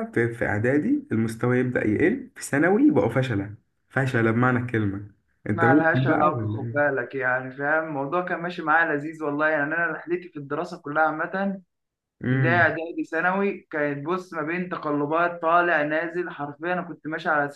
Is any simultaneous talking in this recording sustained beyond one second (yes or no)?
yes